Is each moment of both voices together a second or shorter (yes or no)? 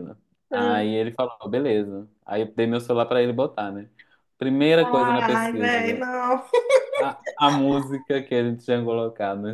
no